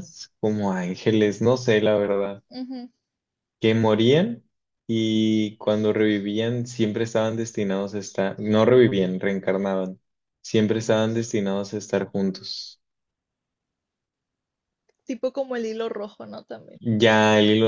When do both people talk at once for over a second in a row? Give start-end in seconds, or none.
none